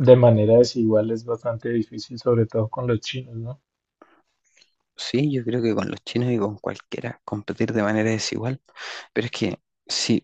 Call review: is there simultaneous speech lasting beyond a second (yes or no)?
no